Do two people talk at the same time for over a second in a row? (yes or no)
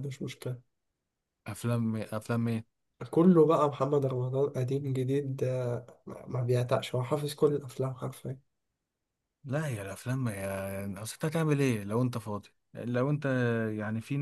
no